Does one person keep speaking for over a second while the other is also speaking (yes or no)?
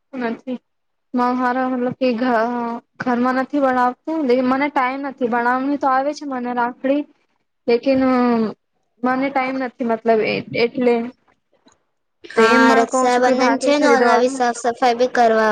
yes